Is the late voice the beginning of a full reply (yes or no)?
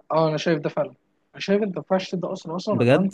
no